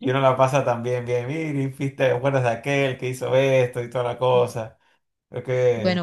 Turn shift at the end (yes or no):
yes